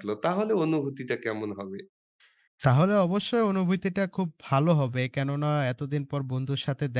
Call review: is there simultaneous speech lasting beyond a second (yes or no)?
no